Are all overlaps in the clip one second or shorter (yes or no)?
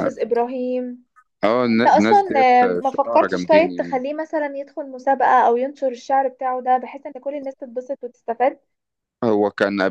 no